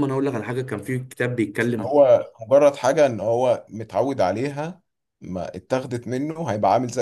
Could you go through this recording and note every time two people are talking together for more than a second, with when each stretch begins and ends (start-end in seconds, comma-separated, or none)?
none